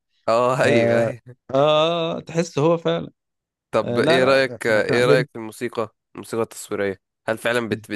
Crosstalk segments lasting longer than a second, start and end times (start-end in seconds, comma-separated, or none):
3.8-5.3